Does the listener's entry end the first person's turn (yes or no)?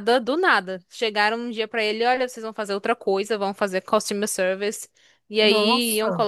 no